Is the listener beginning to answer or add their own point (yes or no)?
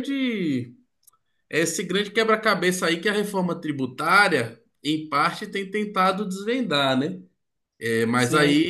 yes